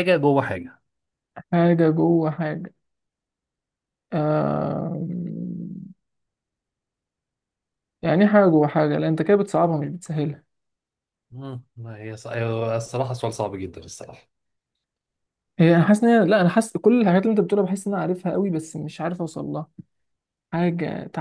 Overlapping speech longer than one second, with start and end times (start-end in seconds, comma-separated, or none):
none